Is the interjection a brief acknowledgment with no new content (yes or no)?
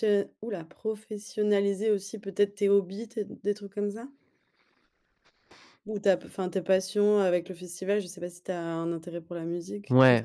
no